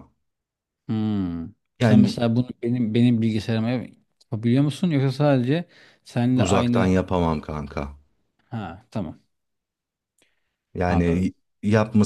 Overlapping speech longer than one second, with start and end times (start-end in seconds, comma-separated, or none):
none